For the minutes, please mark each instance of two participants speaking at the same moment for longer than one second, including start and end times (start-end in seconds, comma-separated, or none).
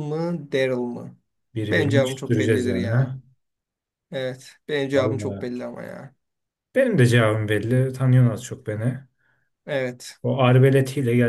1.7-3.2